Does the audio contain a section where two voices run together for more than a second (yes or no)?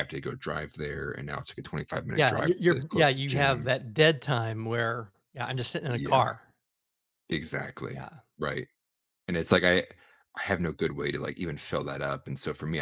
yes